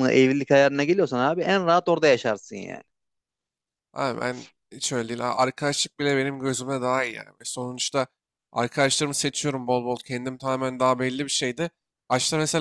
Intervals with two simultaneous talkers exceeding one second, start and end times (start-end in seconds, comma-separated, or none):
none